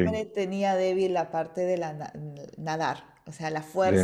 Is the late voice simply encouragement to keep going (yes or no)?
yes